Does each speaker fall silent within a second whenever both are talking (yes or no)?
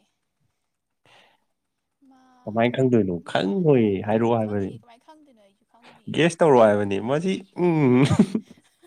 no